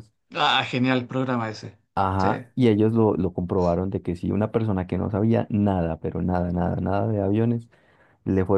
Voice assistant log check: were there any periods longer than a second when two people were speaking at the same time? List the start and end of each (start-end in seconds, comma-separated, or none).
none